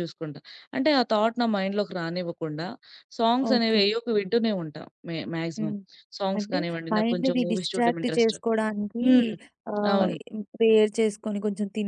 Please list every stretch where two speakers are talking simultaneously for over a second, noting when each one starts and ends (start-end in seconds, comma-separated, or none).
6.4-8.3